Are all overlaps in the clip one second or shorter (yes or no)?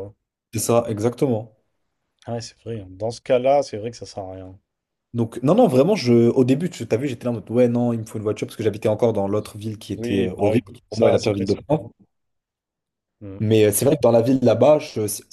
no